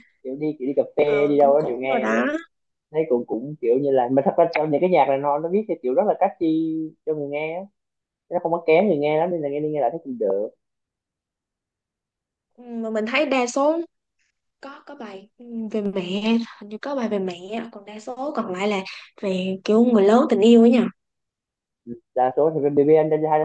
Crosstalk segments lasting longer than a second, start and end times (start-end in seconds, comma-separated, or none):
1.0-2.2